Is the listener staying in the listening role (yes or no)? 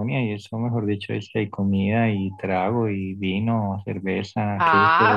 no